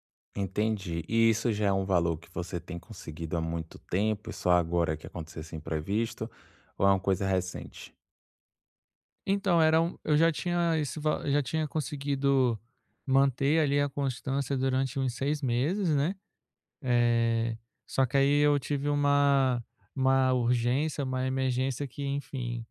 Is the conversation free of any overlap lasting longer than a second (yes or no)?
yes